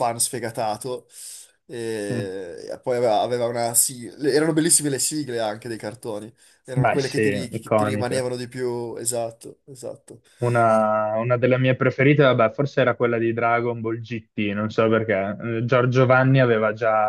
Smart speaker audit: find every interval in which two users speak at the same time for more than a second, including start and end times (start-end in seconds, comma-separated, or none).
6.7-8.3